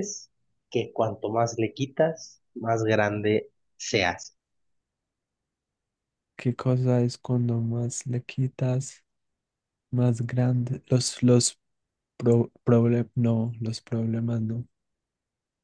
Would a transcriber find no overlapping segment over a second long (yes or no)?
yes